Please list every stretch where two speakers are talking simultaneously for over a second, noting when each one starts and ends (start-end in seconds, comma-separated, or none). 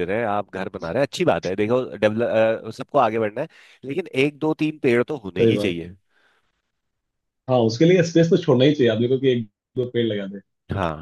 none